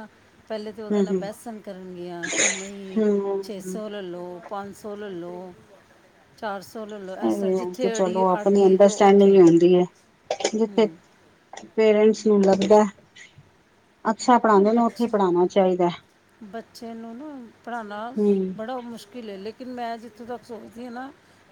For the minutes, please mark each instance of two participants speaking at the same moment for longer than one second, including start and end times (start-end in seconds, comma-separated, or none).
7.2-9.4